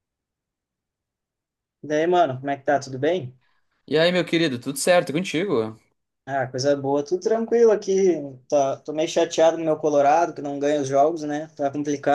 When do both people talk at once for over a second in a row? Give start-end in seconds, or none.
none